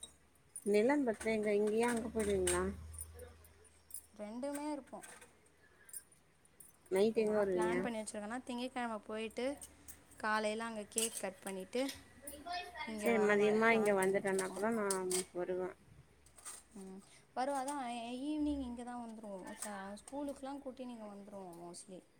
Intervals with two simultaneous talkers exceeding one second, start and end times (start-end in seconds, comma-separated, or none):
13.0-14.6